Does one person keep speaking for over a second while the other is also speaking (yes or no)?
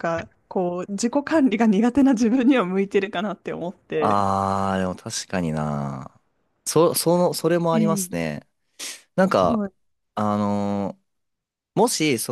no